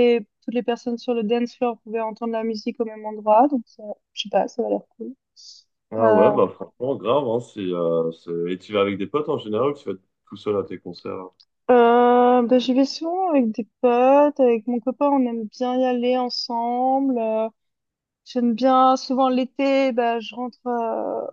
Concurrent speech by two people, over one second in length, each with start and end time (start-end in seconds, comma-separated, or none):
none